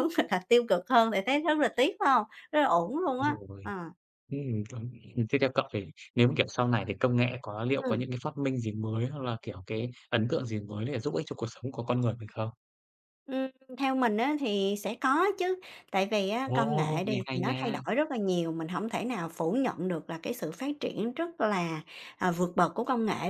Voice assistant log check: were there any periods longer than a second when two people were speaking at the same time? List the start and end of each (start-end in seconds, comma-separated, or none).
16.4-17.8